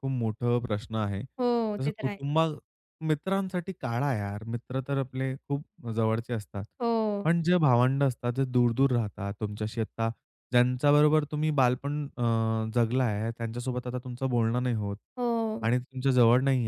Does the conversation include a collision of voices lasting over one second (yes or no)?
no